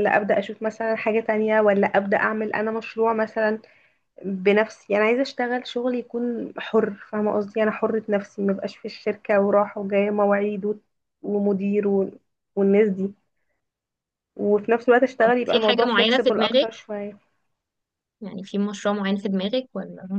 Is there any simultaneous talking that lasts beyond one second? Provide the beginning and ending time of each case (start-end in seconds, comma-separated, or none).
15.2-16.7